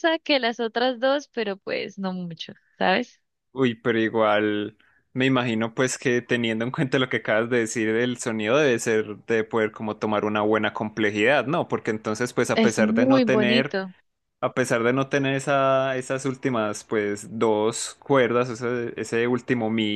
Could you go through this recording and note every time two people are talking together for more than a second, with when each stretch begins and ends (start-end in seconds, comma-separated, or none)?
12.5-13.7